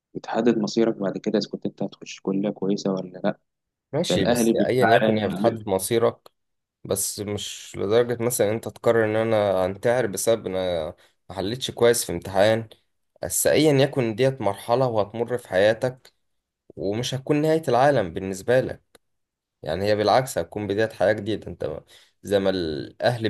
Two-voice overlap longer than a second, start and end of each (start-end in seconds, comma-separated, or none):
4.1-5.6